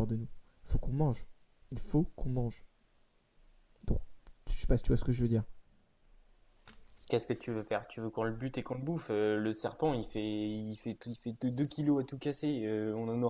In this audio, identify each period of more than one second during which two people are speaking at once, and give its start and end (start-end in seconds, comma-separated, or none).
none